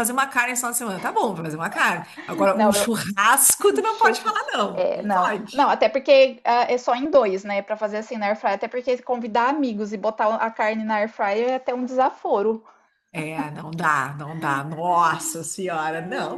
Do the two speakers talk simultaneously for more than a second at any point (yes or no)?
yes